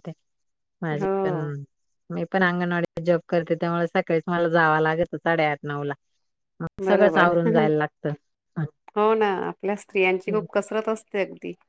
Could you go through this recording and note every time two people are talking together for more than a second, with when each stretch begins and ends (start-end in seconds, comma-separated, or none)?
none